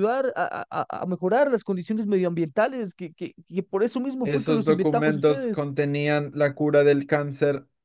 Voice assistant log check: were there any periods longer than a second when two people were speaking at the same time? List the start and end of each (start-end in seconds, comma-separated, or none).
4.2-5.6